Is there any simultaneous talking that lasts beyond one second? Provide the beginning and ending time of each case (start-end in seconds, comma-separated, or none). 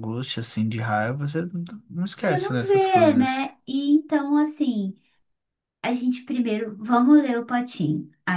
2.1-3.5